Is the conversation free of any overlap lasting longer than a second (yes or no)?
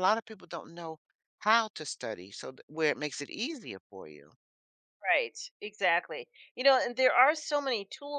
yes